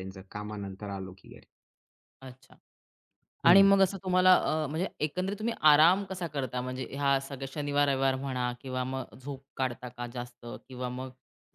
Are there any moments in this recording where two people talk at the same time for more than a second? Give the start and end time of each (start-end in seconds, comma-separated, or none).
none